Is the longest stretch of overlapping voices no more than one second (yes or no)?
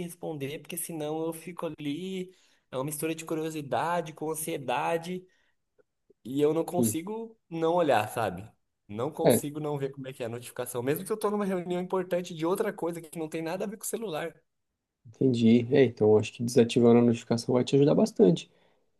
yes